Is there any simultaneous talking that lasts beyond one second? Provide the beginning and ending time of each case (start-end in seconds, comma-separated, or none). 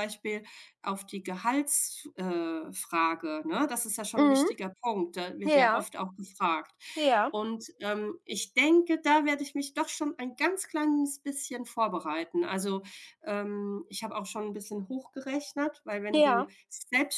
none